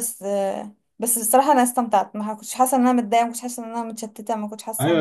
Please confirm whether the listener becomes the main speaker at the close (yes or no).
yes